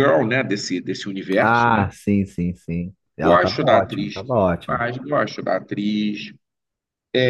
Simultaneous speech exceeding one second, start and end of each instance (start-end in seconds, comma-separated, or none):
3.2-4.8